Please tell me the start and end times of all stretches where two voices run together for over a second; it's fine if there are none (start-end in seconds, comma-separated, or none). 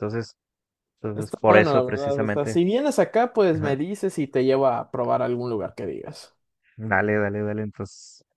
1.1-2.6